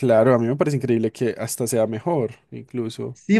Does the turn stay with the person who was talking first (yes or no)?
no